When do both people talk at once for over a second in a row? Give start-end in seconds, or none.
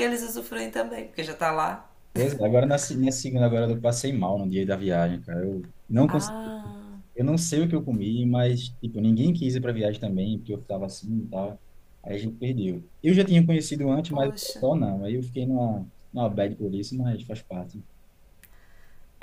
none